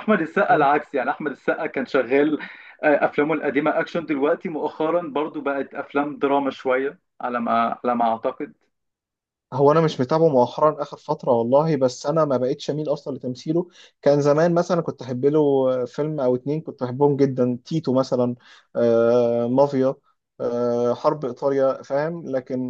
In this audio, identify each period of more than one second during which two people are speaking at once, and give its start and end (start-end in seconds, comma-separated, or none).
none